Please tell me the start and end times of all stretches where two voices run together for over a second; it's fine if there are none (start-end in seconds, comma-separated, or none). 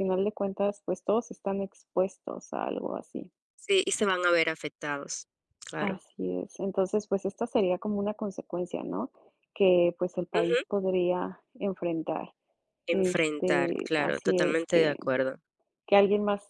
12.9-15.0